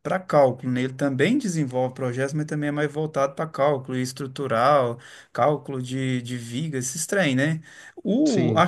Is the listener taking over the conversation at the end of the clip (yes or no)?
no